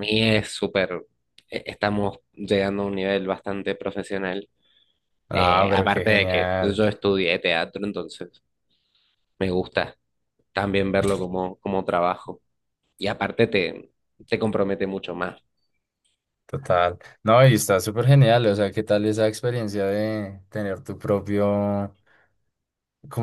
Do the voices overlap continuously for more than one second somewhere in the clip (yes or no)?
yes